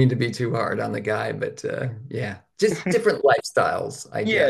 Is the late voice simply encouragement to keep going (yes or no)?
no